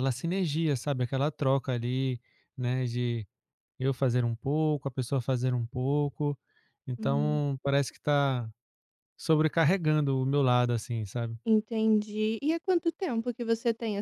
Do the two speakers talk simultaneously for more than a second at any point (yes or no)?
no